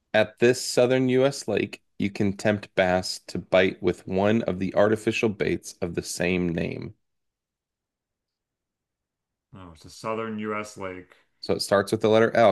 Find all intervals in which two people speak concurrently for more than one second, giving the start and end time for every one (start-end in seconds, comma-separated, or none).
none